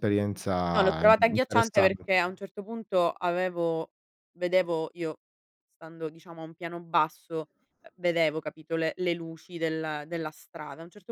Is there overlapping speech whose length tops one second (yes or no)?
yes